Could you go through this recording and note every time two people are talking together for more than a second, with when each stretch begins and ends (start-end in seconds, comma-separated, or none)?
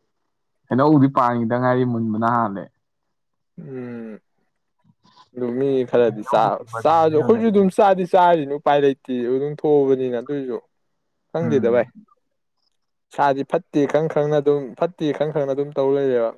6.0-7.7